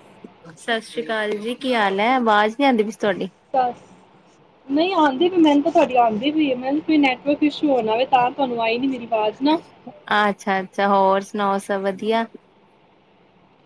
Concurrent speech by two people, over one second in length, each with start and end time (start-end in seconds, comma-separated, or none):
none